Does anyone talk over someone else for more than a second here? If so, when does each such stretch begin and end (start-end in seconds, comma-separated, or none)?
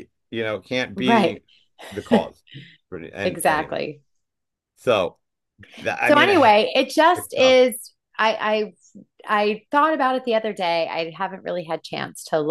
none